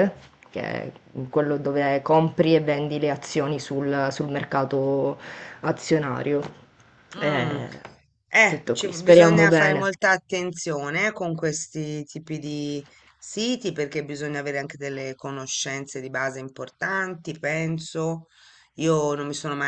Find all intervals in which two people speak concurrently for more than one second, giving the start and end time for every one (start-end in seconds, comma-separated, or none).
8.5-9.9